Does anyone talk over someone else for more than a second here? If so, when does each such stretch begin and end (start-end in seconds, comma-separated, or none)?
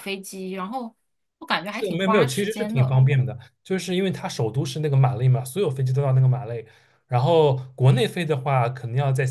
1.7-3.0